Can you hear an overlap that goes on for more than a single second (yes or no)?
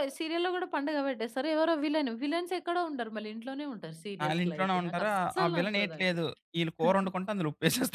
yes